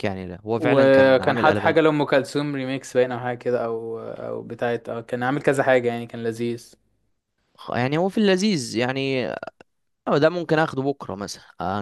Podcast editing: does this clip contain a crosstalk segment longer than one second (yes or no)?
yes